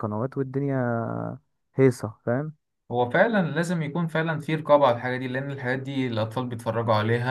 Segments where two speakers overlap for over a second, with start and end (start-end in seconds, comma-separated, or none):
none